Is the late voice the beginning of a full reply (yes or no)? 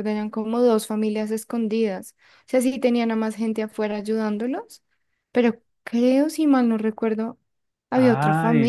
yes